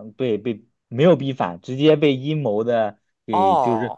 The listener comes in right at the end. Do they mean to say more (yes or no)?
no